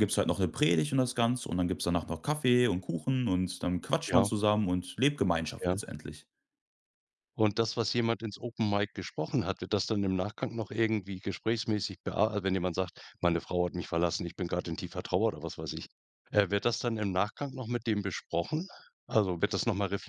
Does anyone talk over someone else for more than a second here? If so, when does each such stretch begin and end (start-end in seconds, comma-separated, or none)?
none